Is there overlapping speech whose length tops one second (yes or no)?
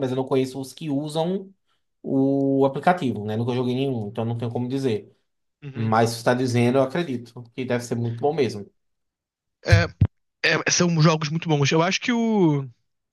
no